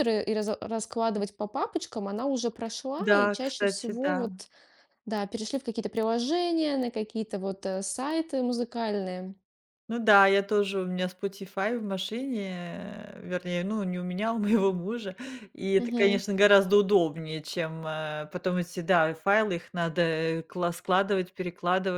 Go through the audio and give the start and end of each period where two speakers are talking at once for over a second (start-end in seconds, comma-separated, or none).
3.0-4.3